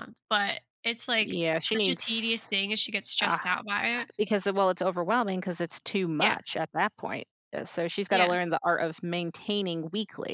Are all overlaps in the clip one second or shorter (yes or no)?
no